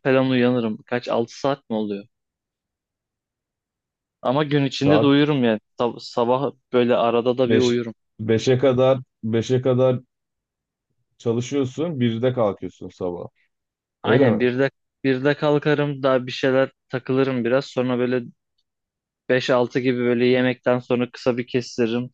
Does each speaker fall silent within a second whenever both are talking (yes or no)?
yes